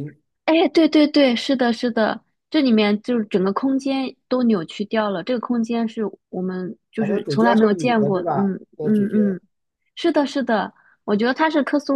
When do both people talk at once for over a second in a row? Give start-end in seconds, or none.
7.0-9.4